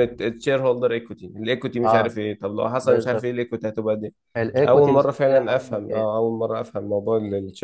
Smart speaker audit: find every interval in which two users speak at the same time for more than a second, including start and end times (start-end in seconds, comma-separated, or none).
4.6-6.1